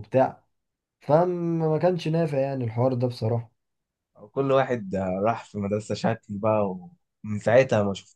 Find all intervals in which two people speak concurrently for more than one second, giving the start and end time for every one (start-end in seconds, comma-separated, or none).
none